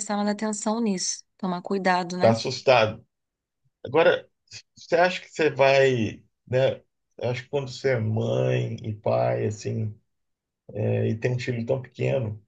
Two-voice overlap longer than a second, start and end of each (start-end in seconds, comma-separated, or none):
none